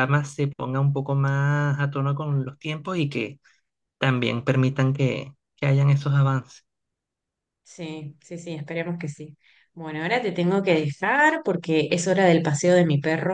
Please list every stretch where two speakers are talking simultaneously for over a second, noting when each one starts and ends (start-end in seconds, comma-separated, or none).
none